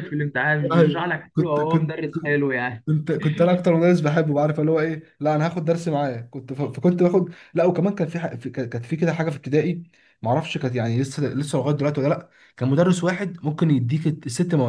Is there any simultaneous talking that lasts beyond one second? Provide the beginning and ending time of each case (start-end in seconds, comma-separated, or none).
0.7-2.0